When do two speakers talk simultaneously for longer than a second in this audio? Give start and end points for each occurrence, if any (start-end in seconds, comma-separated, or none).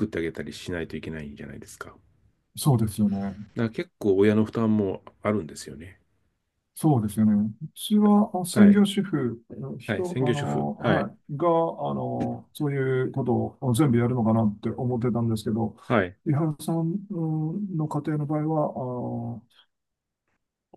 9.8-11.1